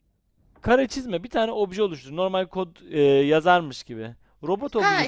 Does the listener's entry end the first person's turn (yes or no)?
yes